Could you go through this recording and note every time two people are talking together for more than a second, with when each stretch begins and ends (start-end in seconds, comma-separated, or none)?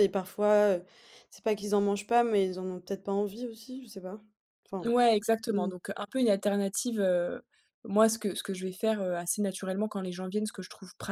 none